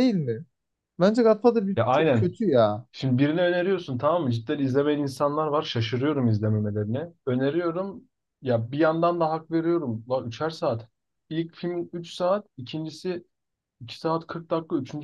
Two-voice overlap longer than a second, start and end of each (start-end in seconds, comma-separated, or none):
none